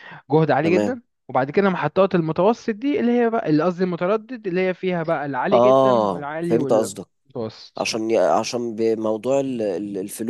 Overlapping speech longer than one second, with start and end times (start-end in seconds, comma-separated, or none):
5.5-7.1